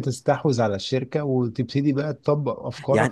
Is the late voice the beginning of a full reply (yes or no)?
yes